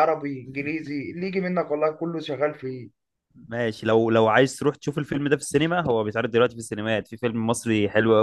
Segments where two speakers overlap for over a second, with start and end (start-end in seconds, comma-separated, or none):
none